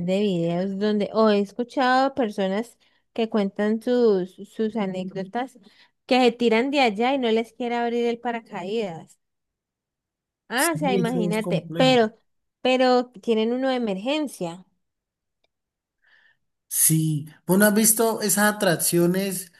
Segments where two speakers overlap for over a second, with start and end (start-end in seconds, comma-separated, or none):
10.5-12.0